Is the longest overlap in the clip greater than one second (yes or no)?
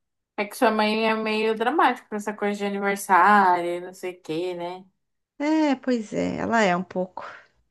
no